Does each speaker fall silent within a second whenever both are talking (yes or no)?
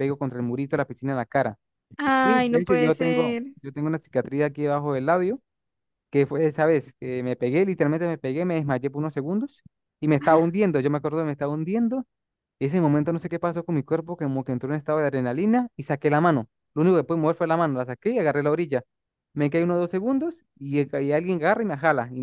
no